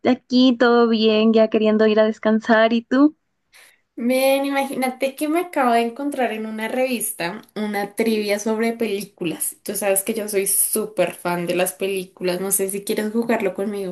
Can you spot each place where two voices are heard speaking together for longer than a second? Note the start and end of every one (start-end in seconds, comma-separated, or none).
none